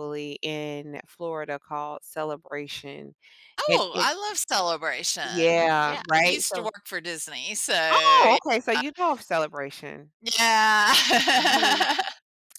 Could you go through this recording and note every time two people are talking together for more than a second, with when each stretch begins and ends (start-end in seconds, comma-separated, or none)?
5.2-6.7